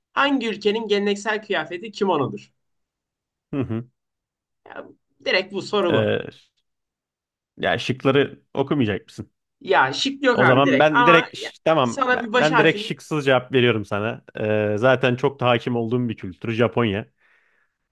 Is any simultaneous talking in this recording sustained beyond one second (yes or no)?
yes